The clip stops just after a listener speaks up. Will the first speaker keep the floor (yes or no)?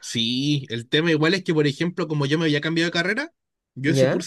yes